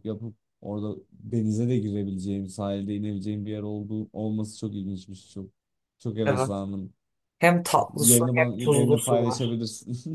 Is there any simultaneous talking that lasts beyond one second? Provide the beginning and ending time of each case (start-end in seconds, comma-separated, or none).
8.0-9.6